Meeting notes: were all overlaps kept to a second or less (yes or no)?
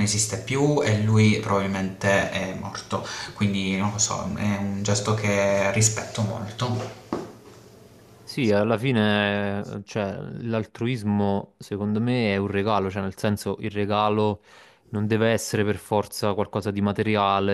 yes